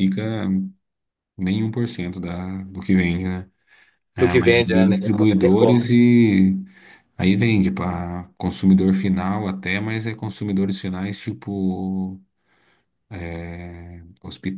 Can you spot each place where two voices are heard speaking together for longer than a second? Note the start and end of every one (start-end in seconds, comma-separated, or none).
4.2-5.9